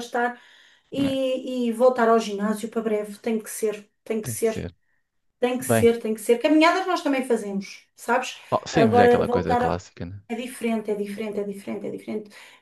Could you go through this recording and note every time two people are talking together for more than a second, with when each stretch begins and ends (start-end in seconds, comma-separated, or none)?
8.5-9.8